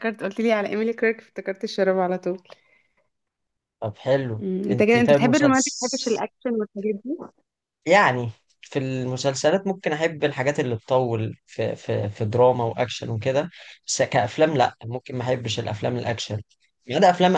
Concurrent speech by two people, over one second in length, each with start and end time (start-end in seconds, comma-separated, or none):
4.4-6.2